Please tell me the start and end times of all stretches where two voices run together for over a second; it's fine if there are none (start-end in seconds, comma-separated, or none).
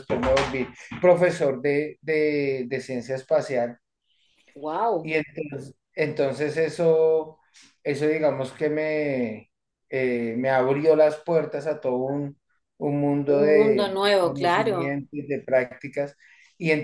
13.3-15.0